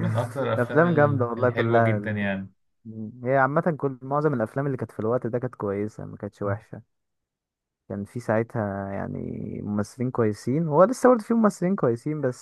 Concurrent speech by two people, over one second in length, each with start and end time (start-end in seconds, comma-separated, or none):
0.6-2.3